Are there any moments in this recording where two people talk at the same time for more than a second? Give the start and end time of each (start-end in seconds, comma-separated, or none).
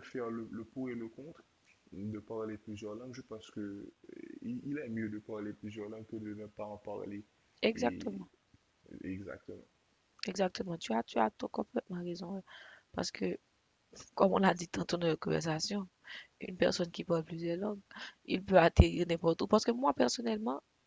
none